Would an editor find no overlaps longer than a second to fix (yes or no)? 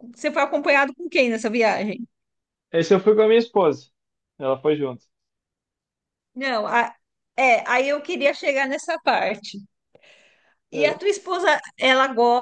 yes